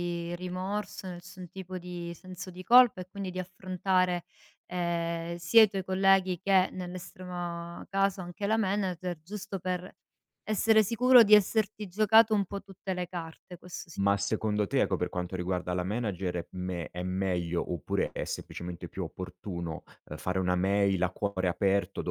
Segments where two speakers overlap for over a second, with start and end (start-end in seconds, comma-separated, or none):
none